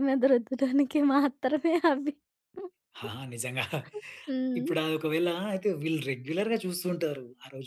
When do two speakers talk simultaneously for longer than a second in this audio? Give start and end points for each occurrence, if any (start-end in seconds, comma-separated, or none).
none